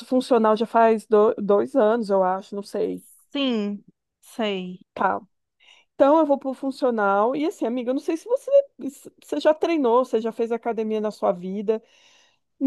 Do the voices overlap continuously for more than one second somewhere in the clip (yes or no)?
no